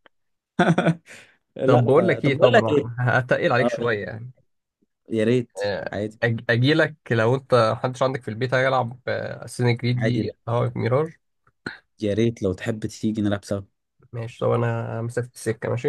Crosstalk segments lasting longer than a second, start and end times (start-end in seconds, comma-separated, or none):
1.6-2.9